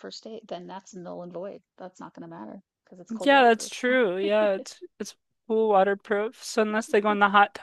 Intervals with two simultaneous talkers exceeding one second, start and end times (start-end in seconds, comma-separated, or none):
none